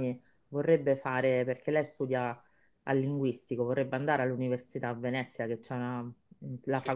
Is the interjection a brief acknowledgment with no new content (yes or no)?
yes